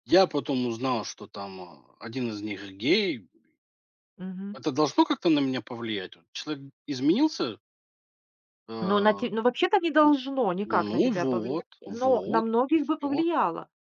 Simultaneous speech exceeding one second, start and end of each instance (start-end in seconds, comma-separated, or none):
10.7-13.2